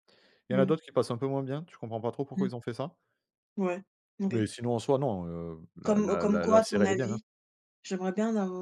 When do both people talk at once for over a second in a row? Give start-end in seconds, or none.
5.8-7.2